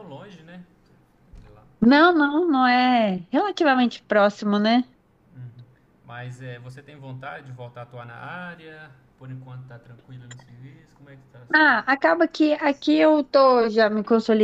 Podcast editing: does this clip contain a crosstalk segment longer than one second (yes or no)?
no